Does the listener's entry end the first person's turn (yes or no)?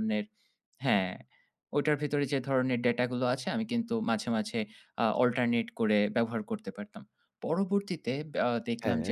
no